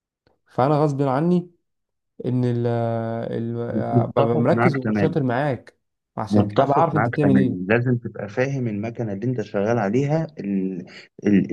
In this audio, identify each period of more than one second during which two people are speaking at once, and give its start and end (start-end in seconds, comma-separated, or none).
3.9-5.2, 6.3-7.8